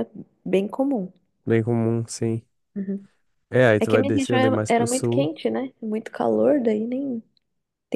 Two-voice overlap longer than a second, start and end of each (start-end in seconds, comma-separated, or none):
3.8-5.3